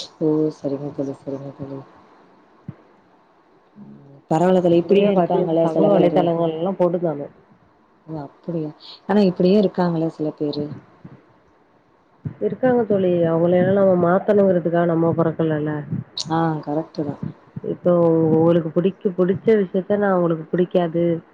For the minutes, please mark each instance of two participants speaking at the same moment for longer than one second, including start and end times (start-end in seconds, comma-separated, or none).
4.8-6.2